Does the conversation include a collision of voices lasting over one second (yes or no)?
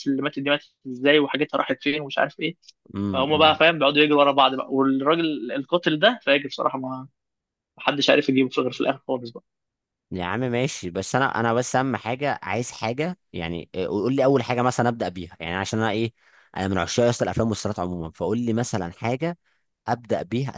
no